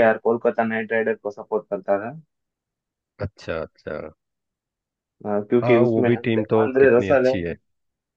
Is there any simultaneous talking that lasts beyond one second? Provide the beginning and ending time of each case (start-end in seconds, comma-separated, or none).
5.6-7.3